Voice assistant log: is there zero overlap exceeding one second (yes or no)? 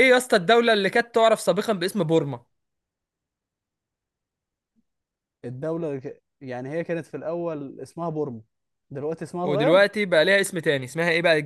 yes